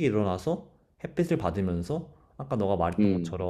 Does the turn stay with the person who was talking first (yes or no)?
yes